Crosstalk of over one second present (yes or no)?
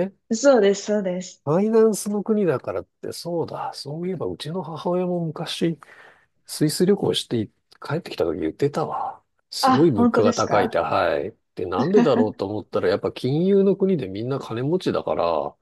yes